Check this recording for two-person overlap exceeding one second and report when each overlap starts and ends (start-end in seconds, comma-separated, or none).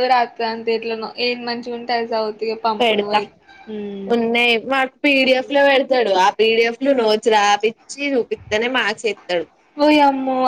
none